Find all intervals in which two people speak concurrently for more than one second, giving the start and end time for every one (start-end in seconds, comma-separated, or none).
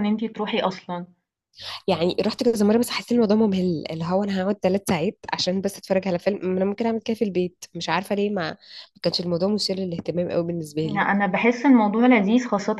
none